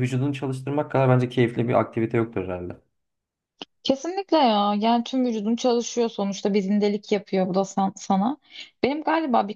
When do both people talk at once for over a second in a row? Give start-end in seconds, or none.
none